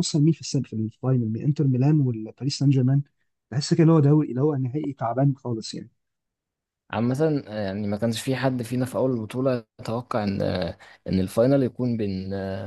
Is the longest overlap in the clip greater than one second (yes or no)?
no